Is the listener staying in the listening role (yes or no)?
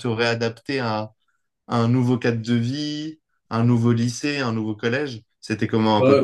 no